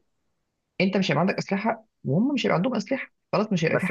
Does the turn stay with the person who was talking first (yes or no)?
no